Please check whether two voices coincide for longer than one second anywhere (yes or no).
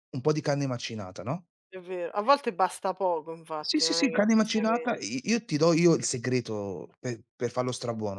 yes